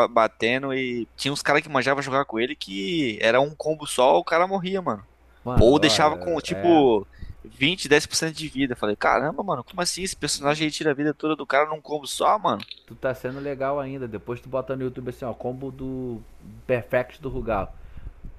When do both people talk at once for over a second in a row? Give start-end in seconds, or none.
5.6-6.8